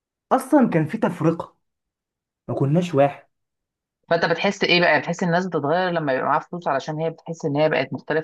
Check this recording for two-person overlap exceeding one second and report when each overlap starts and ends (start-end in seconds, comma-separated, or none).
none